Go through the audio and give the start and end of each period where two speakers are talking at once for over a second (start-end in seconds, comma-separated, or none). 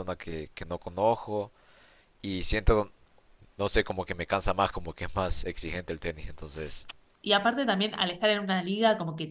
none